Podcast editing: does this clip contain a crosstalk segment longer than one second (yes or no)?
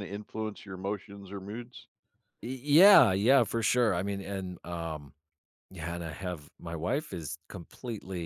no